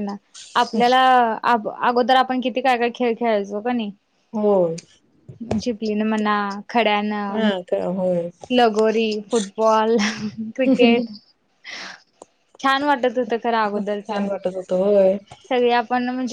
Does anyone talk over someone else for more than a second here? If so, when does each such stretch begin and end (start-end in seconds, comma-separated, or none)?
none